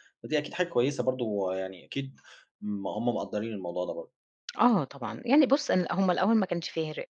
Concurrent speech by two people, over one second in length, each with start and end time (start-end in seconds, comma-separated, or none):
none